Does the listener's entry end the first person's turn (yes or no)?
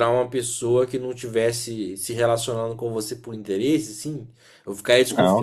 yes